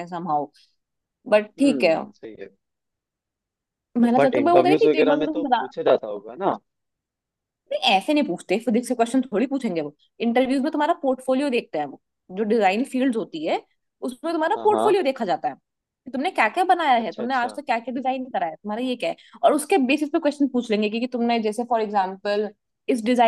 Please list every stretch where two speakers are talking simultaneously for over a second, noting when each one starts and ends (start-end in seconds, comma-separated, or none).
4.0-5.7